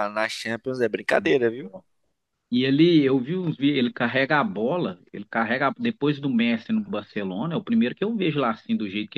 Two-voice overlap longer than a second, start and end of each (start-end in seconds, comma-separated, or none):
none